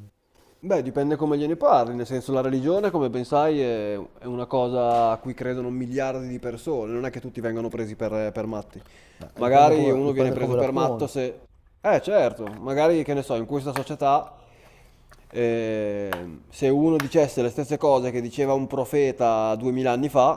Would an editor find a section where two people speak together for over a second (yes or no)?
yes